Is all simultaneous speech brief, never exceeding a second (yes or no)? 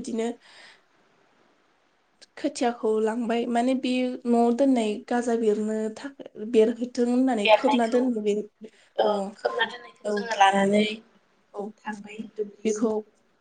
yes